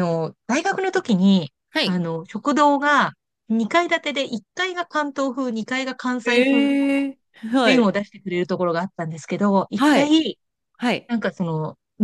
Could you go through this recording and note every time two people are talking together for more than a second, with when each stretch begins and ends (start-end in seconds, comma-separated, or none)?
none